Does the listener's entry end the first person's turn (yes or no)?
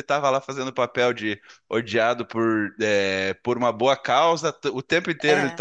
no